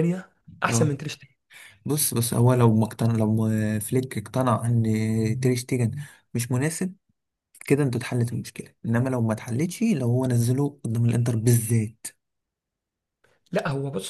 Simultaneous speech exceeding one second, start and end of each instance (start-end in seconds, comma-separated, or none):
none